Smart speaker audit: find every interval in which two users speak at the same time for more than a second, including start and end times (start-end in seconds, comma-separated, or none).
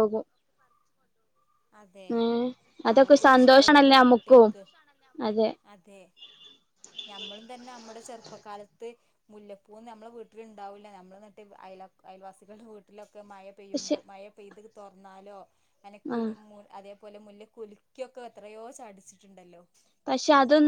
3.0-4.5